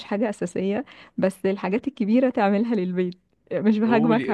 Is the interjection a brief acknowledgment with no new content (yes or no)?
no